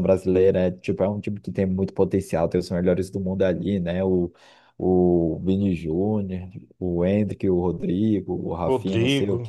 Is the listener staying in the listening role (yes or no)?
yes